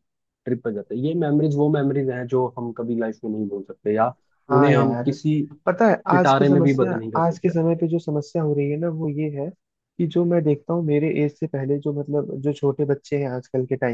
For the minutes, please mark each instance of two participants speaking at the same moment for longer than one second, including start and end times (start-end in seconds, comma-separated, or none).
6.1-7.5